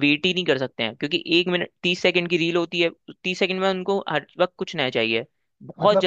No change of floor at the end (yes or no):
no